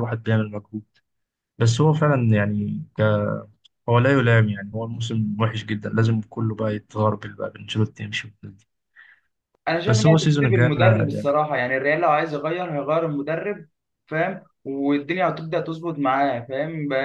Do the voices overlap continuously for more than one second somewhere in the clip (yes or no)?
yes